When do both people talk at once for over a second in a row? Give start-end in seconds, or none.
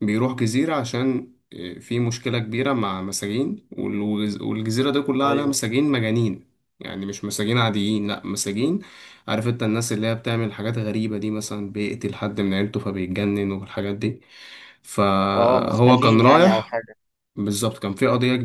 15.4-16.7